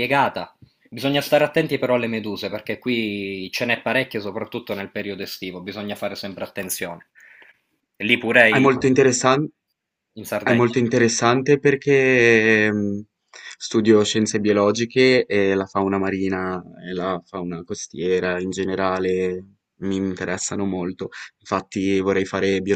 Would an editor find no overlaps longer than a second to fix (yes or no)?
yes